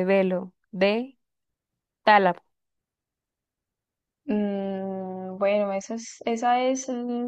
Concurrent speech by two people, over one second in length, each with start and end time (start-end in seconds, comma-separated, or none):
none